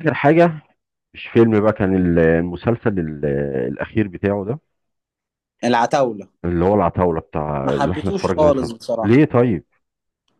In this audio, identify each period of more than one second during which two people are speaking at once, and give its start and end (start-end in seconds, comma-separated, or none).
7.6-9.2